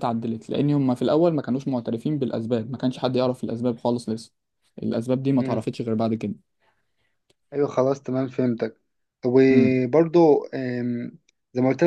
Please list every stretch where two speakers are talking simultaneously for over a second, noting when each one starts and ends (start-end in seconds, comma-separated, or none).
none